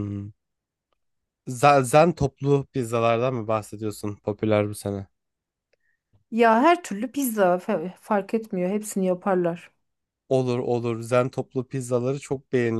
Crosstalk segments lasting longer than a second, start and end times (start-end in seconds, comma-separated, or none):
none